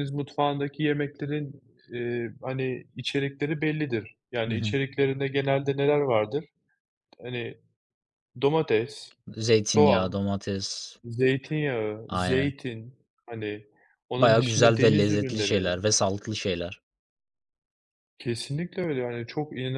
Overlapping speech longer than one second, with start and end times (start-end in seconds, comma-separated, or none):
14.2-15.6